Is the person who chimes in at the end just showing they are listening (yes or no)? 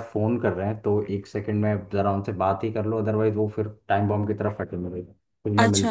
no